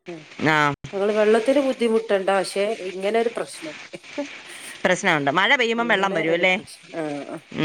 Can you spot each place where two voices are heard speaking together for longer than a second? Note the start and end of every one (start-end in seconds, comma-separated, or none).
none